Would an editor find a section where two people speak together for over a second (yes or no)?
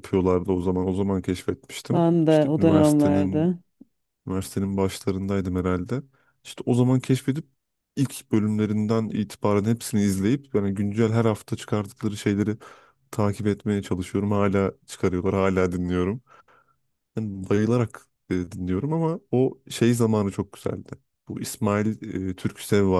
yes